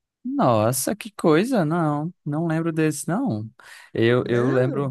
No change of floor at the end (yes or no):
yes